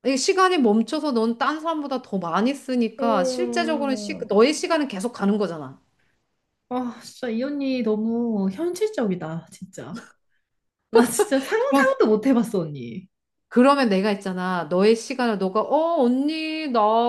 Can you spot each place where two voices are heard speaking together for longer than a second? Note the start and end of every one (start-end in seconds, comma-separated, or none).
3.0-4.3